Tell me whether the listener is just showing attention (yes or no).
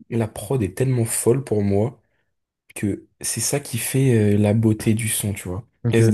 yes